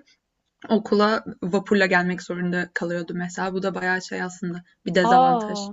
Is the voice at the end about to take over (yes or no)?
yes